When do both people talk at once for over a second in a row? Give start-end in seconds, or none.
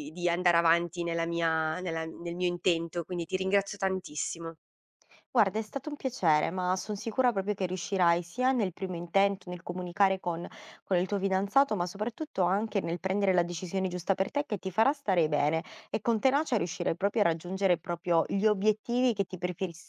none